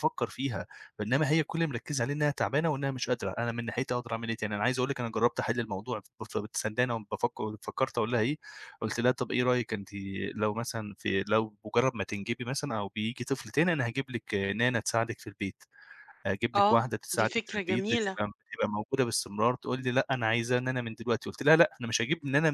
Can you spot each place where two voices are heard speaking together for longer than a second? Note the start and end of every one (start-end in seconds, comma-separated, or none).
16.6-18.2